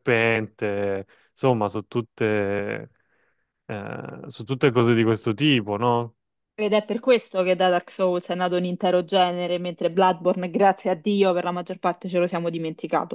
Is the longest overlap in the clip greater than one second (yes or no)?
no